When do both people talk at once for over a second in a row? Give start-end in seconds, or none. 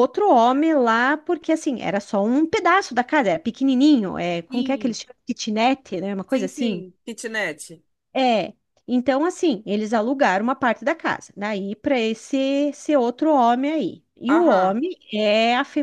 none